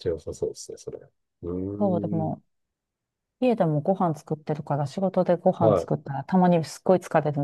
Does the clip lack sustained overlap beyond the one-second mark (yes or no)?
yes